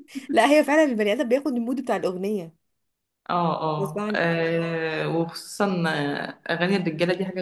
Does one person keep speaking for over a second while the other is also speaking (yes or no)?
no